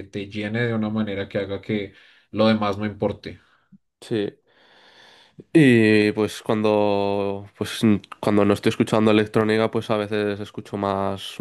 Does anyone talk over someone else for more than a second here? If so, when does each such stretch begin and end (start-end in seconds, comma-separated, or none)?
none